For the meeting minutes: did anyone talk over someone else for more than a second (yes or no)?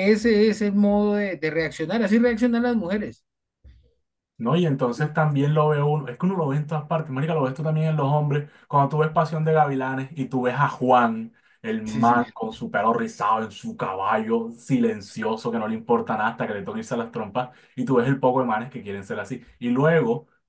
no